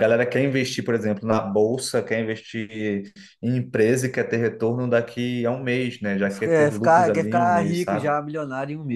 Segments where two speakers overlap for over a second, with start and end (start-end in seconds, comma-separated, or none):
6.3-8.1